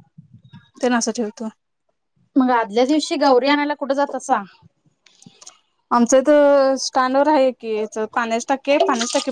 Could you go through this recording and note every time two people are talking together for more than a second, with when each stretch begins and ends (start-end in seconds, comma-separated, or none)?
2.5-4.3